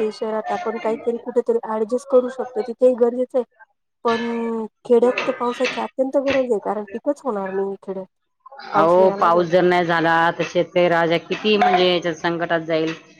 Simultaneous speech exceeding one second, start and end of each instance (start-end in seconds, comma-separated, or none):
none